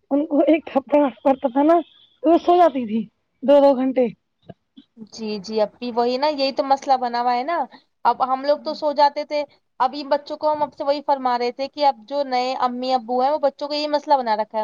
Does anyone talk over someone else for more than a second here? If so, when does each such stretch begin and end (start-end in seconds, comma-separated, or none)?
none